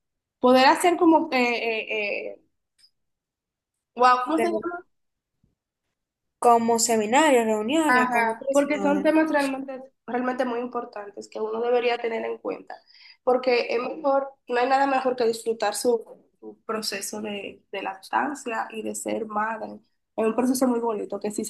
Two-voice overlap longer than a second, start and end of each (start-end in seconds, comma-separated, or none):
7.9-9.1